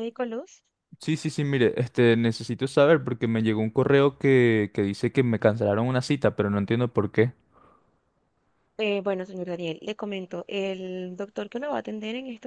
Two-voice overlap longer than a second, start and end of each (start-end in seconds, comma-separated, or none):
none